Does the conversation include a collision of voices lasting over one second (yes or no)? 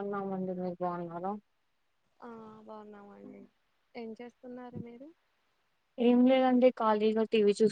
no